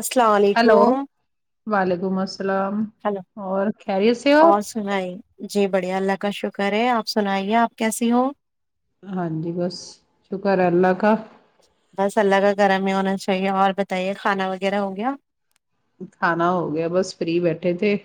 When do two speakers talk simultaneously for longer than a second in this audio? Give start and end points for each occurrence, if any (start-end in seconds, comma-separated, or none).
none